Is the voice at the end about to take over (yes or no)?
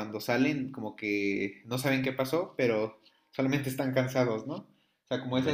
yes